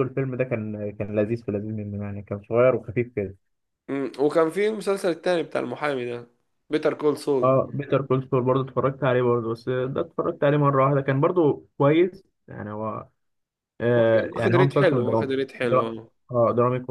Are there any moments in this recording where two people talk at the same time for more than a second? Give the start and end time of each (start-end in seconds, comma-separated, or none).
14.0-15.9